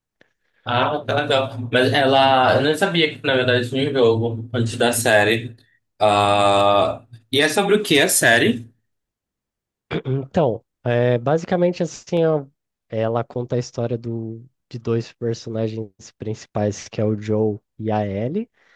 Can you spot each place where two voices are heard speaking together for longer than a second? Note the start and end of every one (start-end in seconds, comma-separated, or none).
none